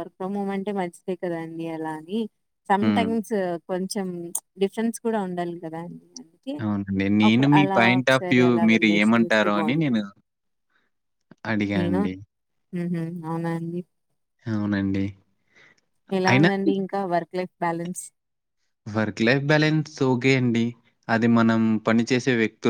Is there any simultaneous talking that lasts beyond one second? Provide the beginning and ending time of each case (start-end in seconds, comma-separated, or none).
7.3-10.0